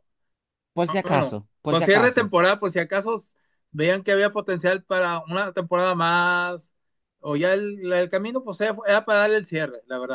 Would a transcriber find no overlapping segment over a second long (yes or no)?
no